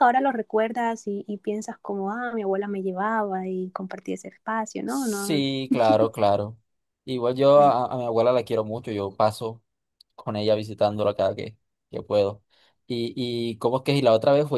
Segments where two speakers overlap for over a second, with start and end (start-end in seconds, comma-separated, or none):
none